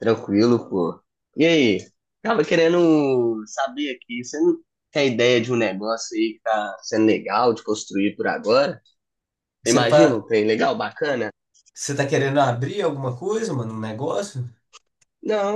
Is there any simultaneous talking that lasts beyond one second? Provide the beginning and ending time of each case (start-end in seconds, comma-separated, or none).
none